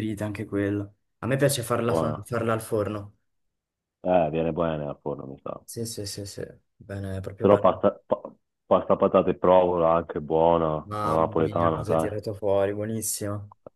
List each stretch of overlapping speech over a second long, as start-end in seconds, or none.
10.9-12.1